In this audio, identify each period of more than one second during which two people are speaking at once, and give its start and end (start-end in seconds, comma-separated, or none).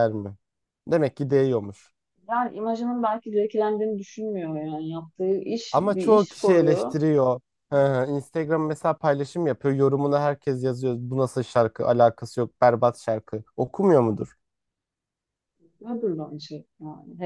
5.7-7.0